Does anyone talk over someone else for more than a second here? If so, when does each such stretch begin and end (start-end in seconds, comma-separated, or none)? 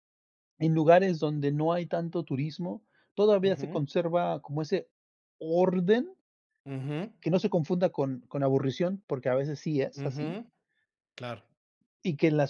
none